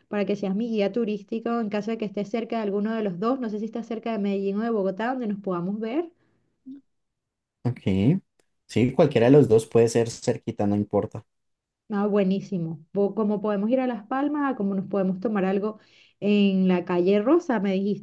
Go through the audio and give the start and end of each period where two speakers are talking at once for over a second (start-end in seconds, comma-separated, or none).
none